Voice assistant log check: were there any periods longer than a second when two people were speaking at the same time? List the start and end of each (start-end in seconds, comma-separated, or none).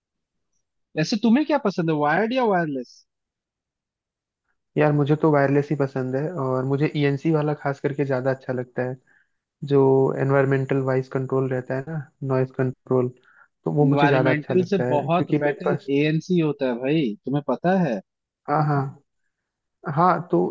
13.8-15.9